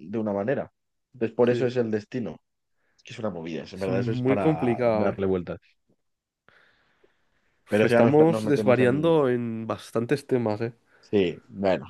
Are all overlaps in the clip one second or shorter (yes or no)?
no